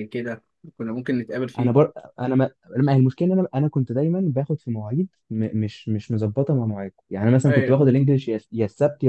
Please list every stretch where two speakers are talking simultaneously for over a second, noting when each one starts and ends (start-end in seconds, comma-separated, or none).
none